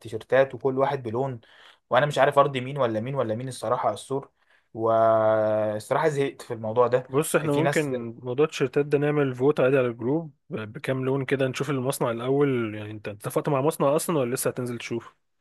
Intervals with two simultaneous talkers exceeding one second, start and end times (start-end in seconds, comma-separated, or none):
none